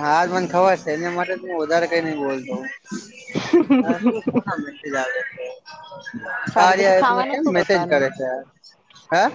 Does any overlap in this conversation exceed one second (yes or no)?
yes